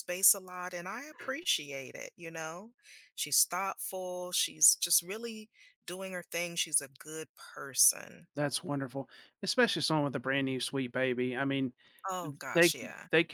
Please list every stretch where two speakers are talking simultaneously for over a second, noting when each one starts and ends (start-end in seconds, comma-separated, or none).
none